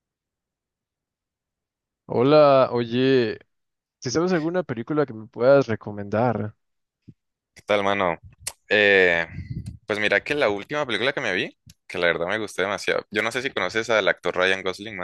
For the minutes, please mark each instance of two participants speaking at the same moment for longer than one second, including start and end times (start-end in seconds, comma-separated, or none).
none